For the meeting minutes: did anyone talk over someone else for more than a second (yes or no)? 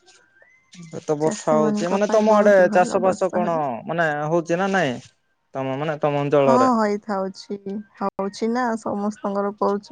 yes